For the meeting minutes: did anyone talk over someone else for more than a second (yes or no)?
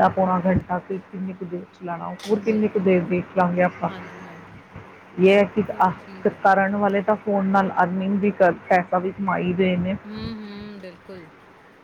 yes